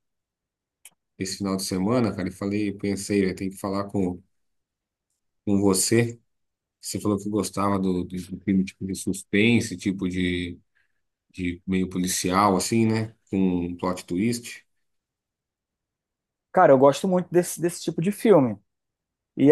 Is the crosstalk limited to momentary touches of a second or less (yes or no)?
yes